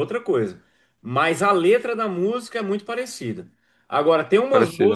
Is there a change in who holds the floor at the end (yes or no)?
no